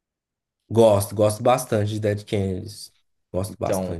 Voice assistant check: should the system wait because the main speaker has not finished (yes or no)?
no